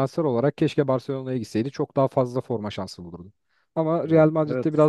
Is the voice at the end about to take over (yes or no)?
no